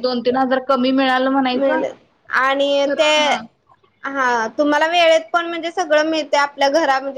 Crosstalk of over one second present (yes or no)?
no